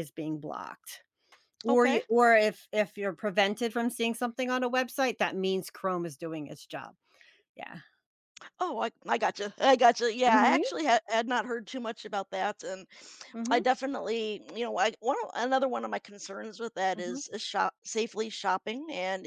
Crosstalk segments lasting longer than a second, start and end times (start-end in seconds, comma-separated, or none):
none